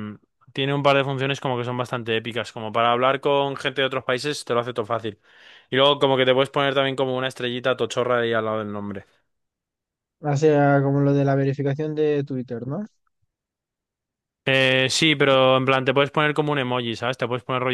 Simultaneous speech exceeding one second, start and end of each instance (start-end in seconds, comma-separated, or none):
none